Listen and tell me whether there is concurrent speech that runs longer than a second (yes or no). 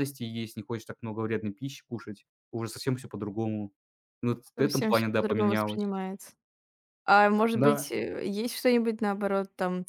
yes